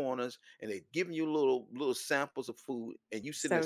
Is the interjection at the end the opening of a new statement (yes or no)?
no